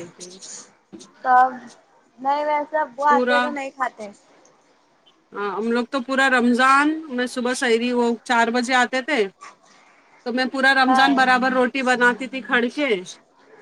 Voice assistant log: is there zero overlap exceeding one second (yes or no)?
yes